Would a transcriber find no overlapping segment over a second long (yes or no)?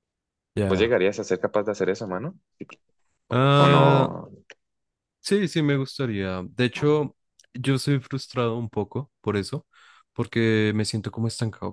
yes